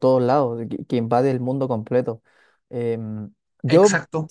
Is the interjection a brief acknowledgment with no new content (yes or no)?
no